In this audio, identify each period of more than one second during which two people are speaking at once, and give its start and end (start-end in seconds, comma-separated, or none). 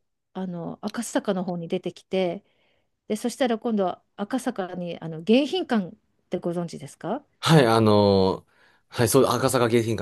none